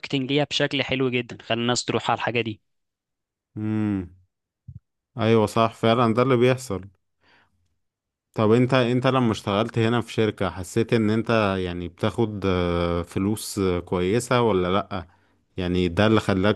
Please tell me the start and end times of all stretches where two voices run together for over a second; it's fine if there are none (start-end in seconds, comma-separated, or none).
none